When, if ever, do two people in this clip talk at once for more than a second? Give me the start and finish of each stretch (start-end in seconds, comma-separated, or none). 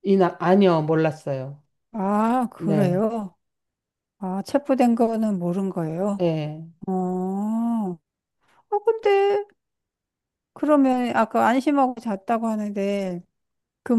none